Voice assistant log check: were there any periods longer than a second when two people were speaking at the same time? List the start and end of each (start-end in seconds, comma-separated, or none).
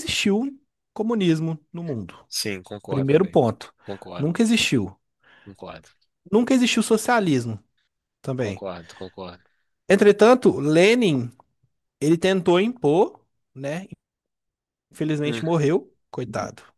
none